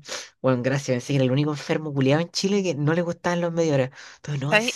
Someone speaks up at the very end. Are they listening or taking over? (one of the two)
listening